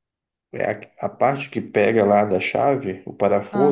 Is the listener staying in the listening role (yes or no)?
yes